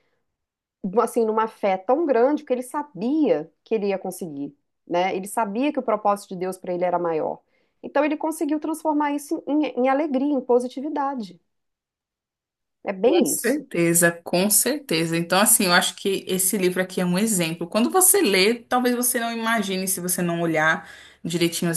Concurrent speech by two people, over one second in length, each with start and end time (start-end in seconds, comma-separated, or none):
none